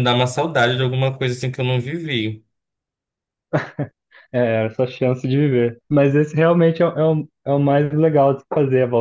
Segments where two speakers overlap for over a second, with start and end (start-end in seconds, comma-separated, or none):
none